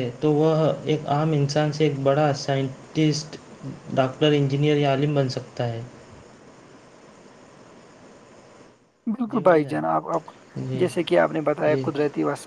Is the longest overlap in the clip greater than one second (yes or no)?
no